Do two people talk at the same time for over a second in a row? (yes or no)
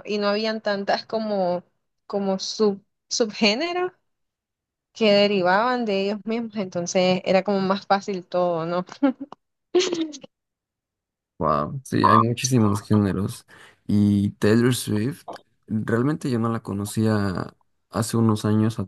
no